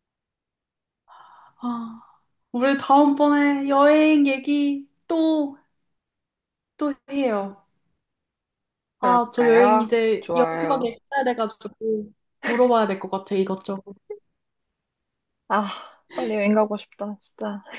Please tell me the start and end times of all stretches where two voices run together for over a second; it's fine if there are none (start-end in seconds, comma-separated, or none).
9.0-10.9